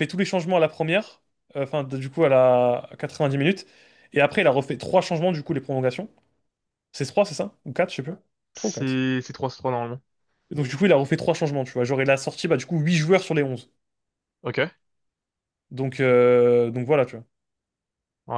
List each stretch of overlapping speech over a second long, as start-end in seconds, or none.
none